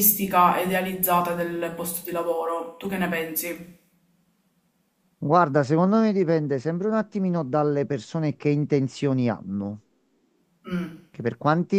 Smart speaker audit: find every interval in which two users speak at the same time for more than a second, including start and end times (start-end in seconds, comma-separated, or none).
none